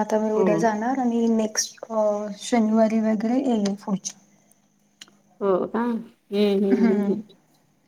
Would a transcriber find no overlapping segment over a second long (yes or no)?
yes